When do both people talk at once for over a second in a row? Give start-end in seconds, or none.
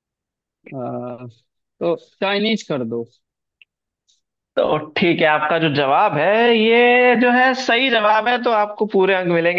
none